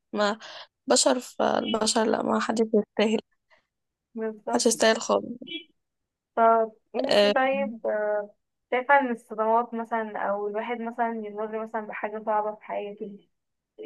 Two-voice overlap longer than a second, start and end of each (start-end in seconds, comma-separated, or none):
none